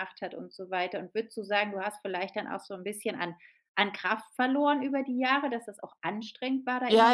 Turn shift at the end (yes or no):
yes